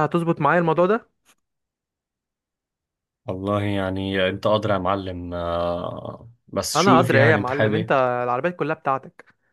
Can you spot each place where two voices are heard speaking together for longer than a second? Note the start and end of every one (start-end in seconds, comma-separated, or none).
6.7-8.0